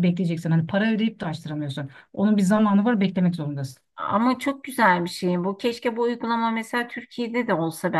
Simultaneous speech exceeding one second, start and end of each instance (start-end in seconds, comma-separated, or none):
none